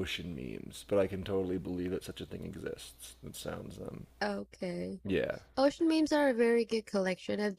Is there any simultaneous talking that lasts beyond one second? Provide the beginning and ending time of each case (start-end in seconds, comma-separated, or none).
none